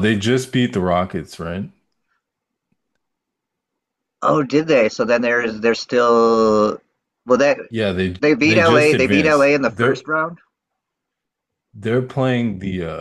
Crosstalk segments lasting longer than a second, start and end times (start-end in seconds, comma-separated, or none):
8.2-10.0